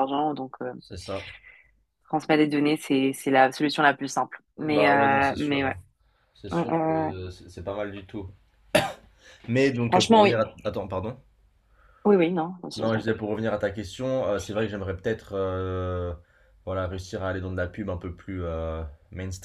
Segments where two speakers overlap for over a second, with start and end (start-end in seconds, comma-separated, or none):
4.5-5.8